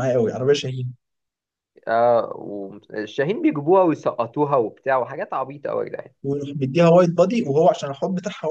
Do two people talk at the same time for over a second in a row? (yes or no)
no